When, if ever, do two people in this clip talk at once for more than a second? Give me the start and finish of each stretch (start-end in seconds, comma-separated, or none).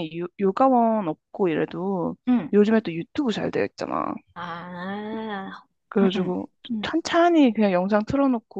none